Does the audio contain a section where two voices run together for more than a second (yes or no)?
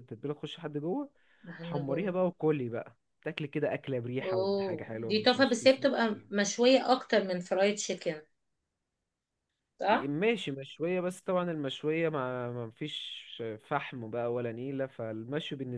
yes